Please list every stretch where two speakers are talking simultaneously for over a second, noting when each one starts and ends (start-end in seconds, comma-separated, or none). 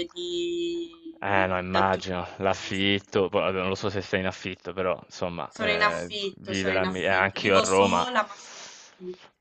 1.2-2.9, 5.5-8.1